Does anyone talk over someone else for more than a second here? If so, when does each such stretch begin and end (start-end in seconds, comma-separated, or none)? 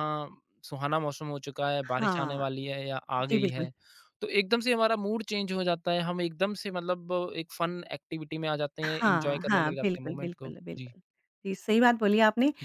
8.8-10.9